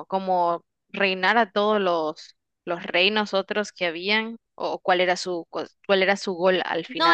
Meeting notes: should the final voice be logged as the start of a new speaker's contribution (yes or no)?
yes